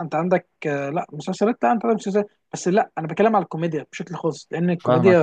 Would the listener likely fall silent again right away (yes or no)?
yes